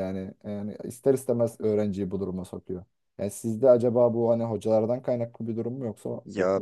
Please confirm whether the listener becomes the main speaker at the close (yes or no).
yes